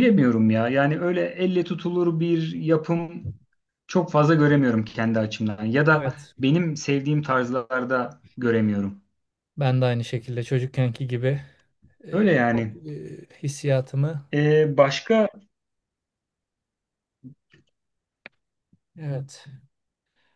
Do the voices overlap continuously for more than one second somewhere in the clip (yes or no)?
no